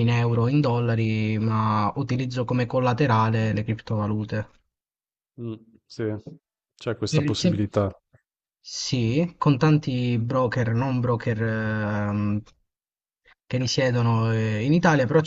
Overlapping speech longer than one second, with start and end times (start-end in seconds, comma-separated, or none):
none